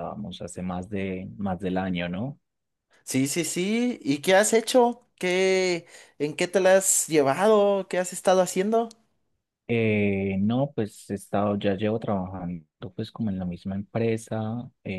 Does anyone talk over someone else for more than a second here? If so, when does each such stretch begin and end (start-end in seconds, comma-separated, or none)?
none